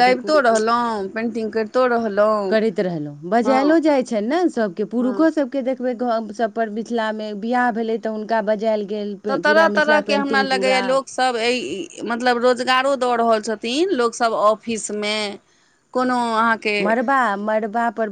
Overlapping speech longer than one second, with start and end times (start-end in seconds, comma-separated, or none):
9.3-10.8